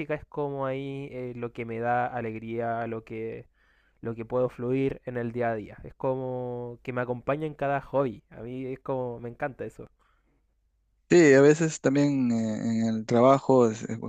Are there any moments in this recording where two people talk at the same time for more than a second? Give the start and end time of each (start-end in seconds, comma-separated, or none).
none